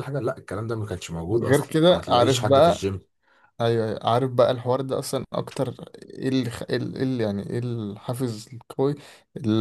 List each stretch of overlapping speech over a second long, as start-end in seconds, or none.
1.3-2.9